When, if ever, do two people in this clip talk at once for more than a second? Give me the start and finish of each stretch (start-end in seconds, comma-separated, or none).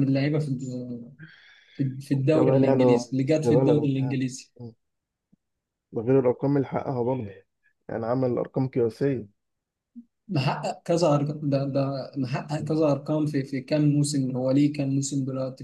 2.3-4.2